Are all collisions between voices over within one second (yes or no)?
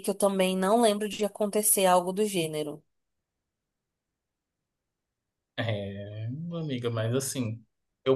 yes